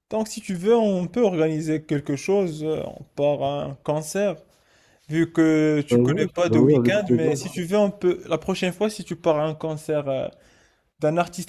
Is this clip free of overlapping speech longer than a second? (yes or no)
no